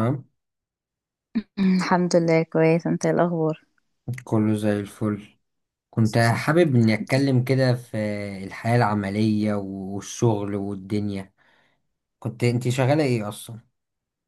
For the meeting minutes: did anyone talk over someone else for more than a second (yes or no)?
no